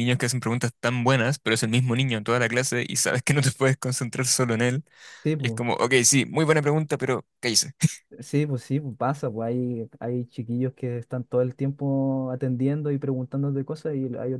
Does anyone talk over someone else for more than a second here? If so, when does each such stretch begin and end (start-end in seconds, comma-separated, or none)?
none